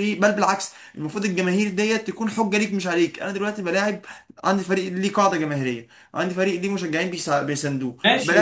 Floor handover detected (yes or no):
yes